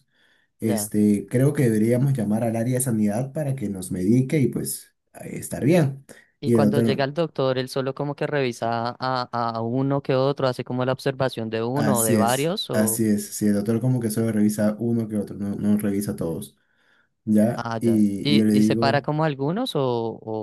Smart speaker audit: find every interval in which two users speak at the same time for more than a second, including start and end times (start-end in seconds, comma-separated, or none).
11.8-13.0, 17.6-19.1